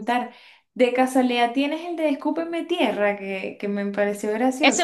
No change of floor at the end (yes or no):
no